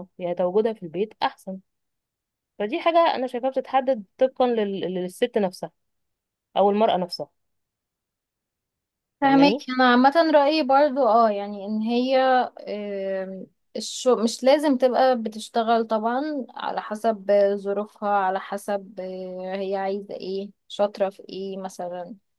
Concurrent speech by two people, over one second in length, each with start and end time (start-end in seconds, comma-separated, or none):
none